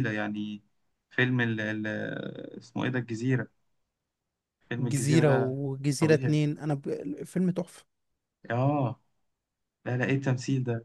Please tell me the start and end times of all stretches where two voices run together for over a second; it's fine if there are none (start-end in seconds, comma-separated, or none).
4.8-6.4